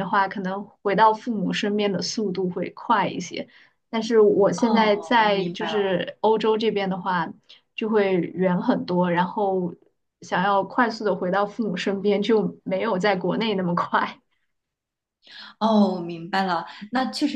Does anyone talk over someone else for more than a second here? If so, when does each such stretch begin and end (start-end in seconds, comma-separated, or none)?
4.6-5.8